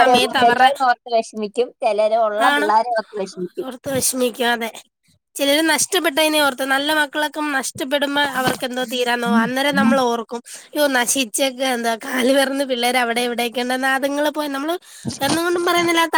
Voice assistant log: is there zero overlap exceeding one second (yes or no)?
yes